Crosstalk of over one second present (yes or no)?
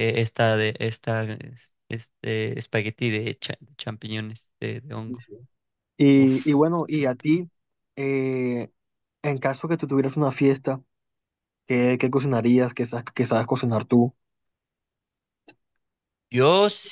yes